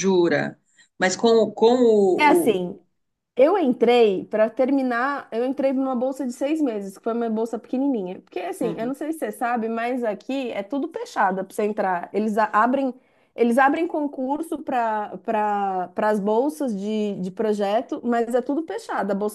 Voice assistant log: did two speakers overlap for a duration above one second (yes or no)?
no